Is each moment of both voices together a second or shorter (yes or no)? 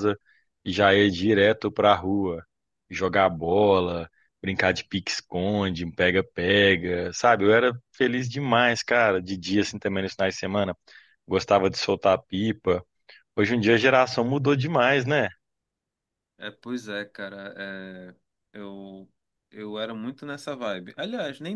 yes